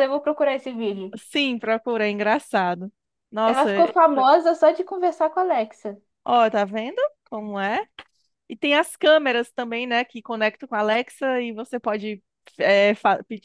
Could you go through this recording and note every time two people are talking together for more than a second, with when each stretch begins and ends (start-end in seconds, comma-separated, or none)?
none